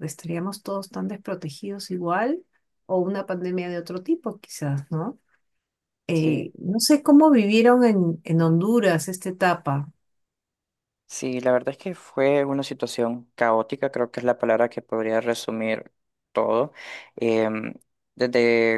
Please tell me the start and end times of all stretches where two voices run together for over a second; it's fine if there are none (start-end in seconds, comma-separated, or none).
none